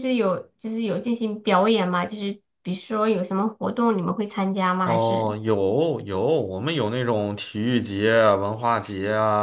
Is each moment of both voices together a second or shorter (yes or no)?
yes